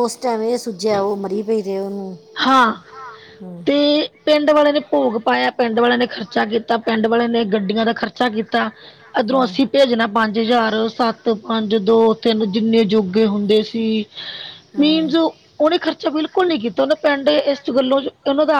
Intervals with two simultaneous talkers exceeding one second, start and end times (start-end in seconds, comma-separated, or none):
none